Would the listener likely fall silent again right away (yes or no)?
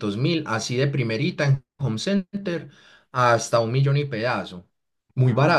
yes